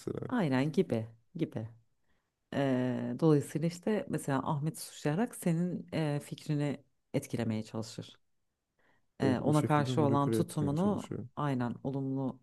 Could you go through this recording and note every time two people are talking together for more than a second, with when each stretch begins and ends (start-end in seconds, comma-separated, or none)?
9.2-11.3